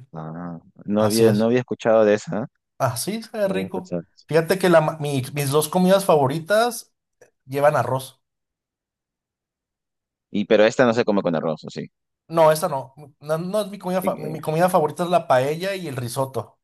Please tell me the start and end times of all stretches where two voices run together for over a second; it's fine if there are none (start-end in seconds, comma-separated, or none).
none